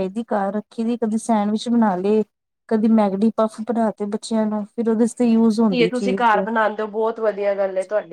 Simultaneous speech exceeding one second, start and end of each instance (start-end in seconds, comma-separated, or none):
none